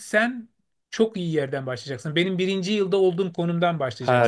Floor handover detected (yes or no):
yes